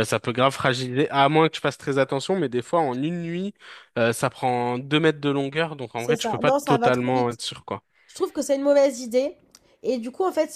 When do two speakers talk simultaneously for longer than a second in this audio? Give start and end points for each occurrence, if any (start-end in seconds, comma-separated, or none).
6.0-7.4